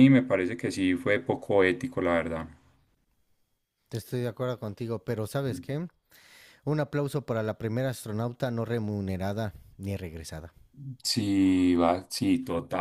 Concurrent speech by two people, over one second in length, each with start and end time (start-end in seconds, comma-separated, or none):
none